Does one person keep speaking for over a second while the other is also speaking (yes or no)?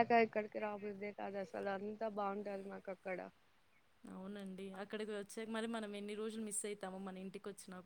no